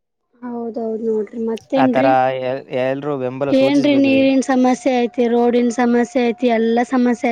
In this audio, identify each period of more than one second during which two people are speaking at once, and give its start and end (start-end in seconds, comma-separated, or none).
none